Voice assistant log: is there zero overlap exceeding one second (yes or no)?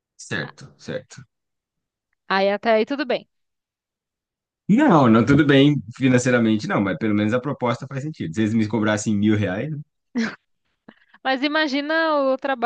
yes